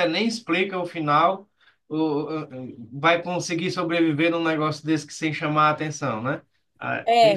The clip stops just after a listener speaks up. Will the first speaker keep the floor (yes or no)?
no